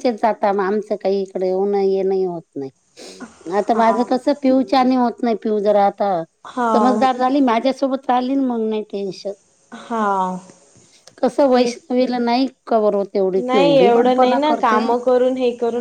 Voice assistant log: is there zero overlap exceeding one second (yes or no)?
no